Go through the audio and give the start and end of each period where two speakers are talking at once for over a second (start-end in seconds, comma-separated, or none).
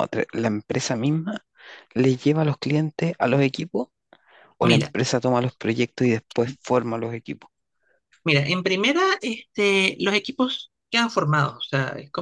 none